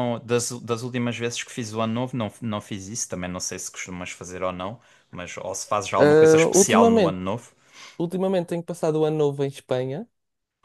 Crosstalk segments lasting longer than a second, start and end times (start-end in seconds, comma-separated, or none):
6.0-7.2